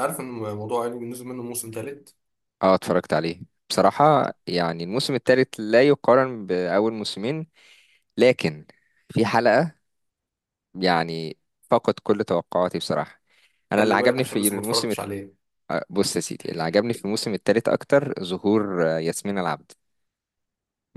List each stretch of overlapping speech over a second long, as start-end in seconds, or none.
13.8-15.0